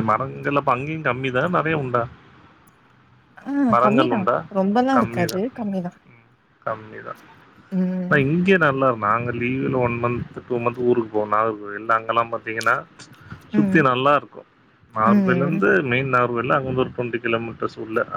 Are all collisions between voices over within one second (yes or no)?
yes